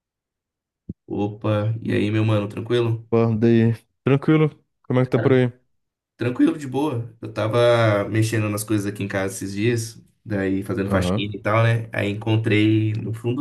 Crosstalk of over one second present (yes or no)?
no